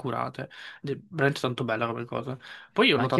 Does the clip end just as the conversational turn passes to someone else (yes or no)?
yes